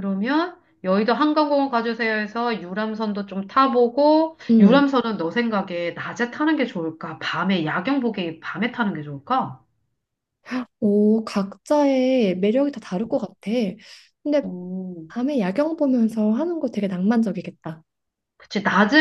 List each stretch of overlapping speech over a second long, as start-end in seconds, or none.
none